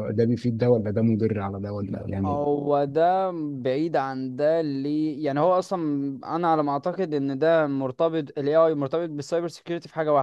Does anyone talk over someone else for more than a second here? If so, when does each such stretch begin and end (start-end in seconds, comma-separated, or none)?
none